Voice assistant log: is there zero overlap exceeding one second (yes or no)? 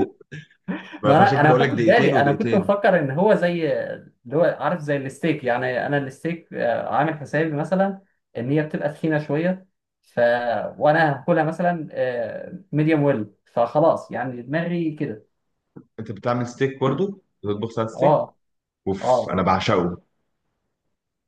no